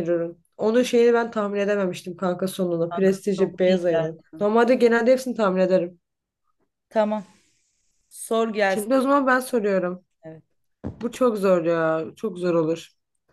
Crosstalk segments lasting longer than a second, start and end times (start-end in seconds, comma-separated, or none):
2.9-4.5